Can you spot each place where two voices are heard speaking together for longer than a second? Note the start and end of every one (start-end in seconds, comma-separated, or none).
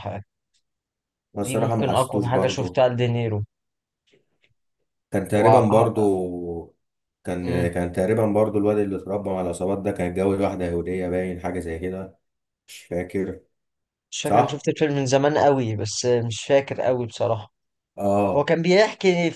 1.4-2.8